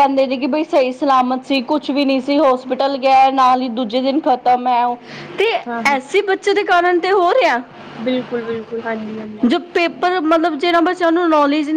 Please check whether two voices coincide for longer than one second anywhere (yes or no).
no